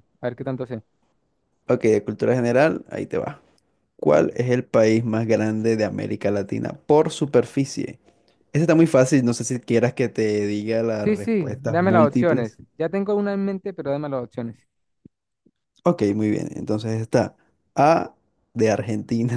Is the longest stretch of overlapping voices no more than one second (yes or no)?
no